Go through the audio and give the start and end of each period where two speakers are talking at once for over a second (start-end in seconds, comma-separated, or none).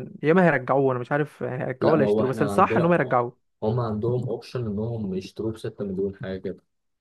1.8-3.2